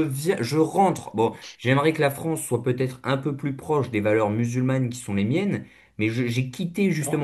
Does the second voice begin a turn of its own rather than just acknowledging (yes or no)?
no